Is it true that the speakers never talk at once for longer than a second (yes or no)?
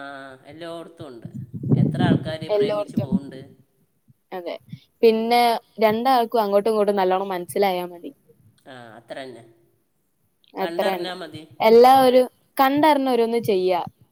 yes